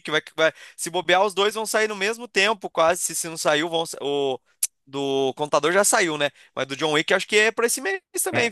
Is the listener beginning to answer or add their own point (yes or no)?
yes